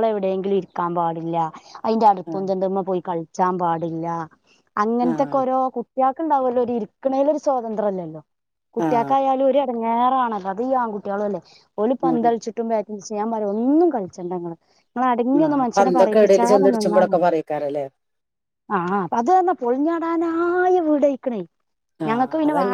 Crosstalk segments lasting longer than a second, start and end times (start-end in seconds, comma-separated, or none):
15.4-17.1